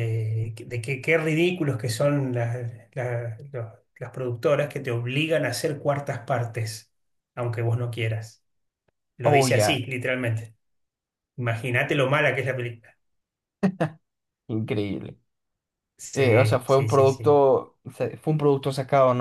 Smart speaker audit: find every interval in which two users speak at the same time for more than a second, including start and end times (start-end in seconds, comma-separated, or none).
16.1-17.4